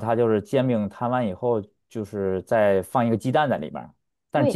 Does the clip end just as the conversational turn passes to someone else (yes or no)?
yes